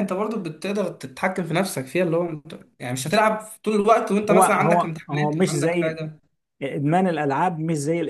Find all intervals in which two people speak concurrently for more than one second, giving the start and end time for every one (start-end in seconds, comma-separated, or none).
4.3-6.0